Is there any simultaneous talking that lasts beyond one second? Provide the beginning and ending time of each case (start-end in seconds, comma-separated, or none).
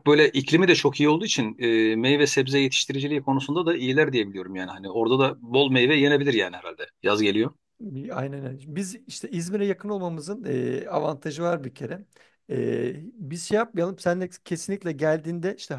none